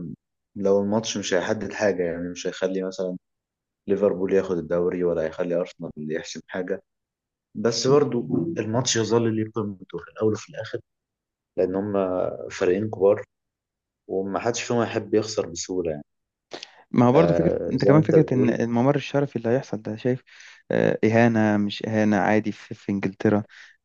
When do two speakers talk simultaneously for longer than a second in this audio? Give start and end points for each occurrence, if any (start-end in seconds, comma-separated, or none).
17.1-18.6